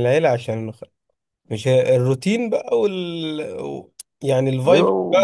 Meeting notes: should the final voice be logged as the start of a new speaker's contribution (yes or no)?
no